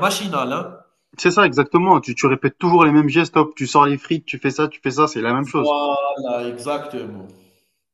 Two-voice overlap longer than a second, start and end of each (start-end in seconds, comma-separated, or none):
none